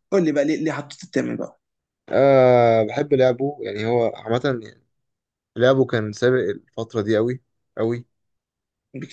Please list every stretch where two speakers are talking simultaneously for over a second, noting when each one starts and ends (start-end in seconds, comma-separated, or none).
none